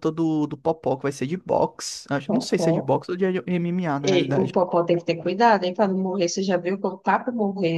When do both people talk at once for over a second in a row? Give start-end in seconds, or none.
none